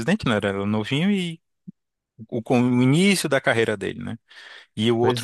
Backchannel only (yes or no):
yes